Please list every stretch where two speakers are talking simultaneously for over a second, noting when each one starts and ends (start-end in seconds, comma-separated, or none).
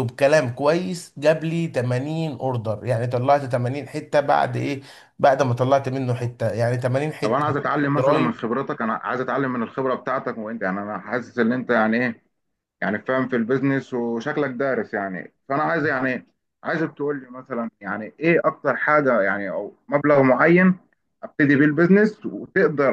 none